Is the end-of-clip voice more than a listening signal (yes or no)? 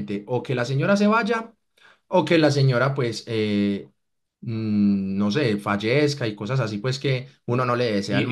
yes